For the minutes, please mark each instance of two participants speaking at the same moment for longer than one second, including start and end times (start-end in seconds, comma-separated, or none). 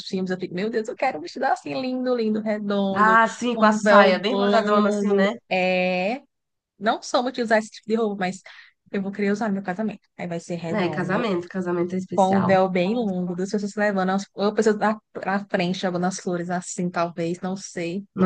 2.9-5.3